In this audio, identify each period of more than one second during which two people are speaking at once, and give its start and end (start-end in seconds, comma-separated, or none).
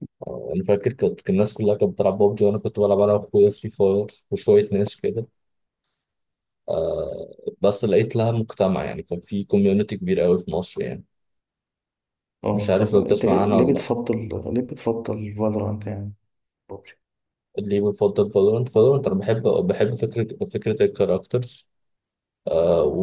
12.5-13.9